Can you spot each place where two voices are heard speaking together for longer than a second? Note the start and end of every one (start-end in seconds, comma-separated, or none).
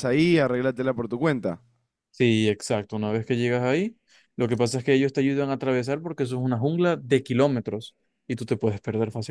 none